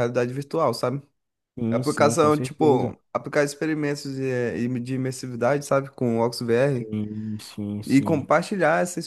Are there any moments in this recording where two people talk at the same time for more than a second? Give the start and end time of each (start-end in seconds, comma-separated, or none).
1.7-2.9